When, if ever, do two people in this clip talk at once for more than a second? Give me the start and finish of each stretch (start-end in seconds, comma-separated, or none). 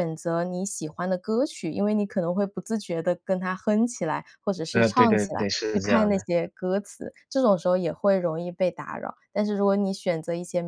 4.7-6.2